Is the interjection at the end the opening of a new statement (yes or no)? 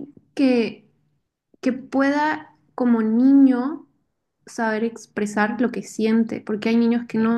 no